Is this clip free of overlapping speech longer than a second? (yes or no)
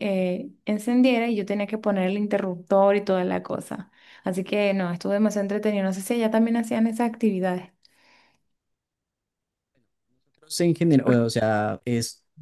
yes